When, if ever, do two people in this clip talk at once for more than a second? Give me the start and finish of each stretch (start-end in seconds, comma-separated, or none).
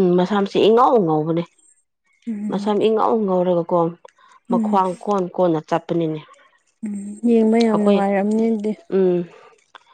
none